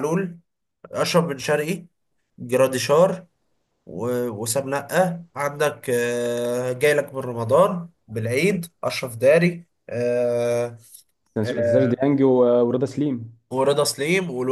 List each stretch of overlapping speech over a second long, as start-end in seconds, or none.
none